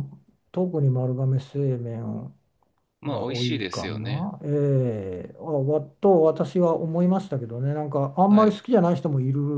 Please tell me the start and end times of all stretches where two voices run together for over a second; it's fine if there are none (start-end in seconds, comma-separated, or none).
3.1-4.3